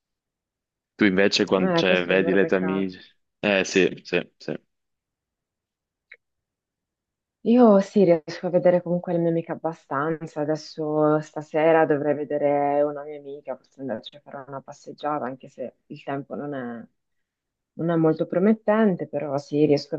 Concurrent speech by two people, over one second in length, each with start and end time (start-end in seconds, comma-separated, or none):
1.6-2.9